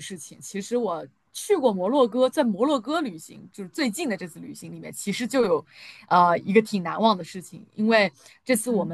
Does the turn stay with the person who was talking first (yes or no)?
yes